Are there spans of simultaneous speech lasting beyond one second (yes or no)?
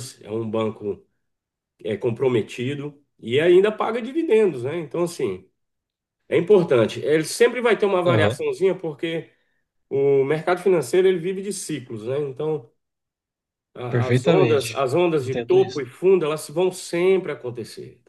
yes